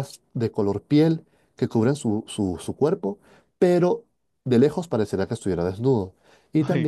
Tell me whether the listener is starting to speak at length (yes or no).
no